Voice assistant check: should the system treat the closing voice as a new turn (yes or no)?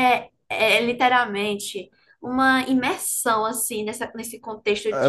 yes